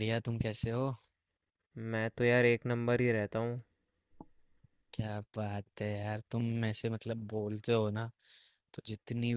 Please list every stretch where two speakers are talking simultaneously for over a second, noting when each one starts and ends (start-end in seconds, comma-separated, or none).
none